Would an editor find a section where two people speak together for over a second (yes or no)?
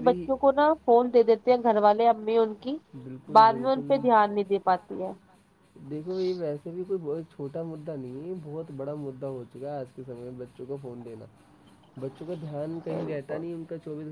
no